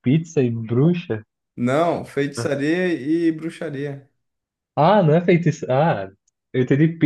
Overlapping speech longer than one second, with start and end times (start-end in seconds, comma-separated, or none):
none